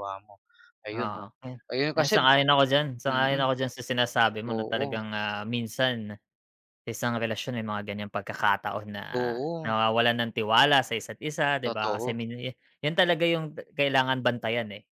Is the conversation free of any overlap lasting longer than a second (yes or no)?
yes